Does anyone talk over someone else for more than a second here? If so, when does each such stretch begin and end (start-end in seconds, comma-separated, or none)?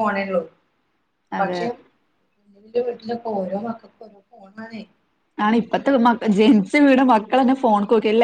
none